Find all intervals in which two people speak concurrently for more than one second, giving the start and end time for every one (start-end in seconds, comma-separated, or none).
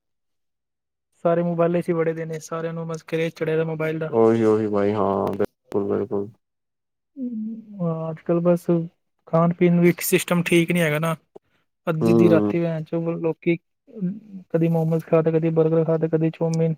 none